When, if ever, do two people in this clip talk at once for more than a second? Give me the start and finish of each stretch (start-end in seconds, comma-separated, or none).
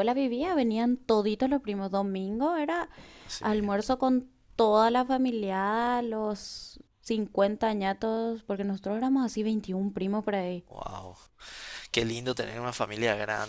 none